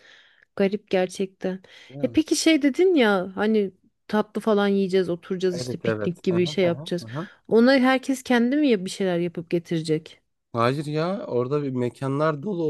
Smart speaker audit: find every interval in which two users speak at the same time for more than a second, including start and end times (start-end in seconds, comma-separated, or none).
5.5-7.0